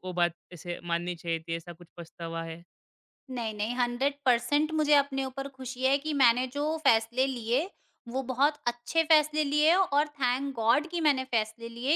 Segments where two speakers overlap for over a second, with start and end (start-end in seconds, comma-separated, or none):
none